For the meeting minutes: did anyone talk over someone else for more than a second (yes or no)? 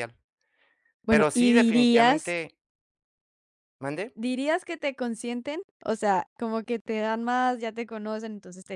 yes